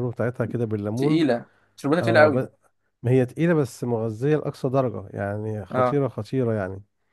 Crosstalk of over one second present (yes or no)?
no